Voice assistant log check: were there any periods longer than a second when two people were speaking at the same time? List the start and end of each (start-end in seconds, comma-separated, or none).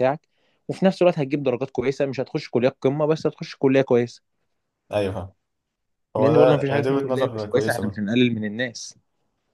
6.2-8.0